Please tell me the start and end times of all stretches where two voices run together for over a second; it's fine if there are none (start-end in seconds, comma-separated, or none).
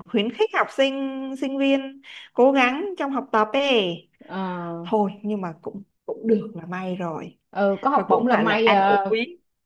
7.9-9.1